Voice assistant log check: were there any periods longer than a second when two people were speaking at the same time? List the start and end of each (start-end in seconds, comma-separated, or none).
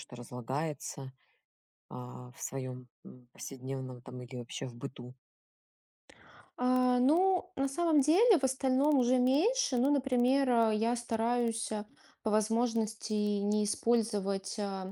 none